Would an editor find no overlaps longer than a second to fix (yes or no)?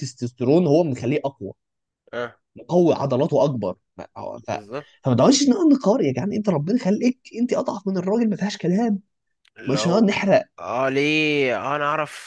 yes